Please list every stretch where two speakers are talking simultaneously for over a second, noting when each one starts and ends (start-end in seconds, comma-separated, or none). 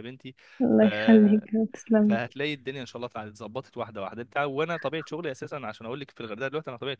none